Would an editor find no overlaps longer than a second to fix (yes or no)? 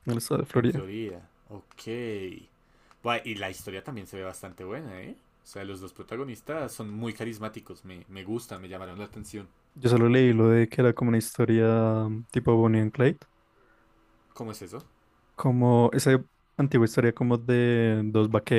yes